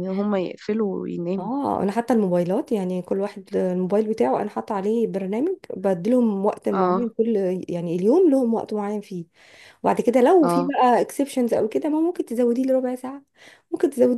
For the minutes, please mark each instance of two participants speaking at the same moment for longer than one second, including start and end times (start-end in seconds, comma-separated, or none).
none